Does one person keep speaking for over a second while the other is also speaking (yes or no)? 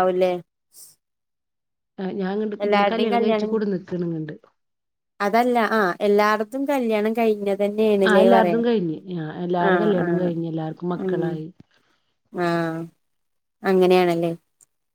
no